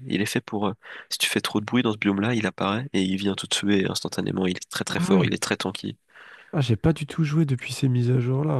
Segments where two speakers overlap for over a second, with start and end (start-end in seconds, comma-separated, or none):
none